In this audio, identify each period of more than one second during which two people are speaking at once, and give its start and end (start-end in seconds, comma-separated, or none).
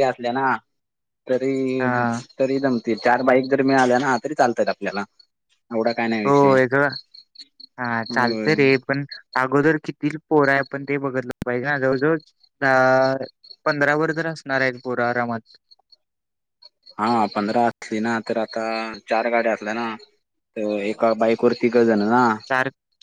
none